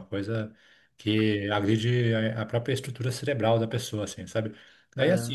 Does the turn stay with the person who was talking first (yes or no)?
yes